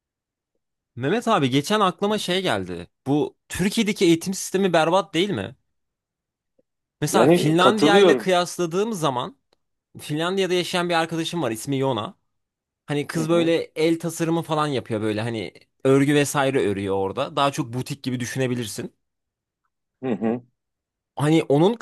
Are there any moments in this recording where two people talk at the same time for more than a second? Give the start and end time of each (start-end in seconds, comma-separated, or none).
7.1-8.3